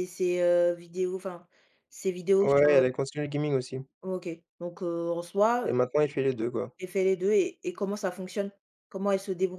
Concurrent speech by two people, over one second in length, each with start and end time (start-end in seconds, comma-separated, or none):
none